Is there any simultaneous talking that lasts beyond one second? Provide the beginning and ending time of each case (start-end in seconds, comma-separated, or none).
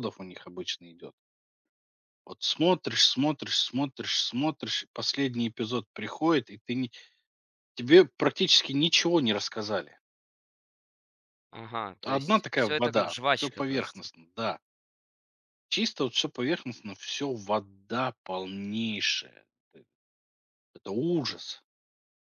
12.0-14.1